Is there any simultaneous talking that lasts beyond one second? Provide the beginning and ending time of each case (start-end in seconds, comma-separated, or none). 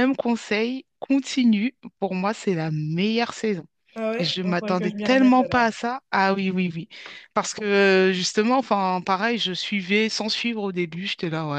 4.2-5.7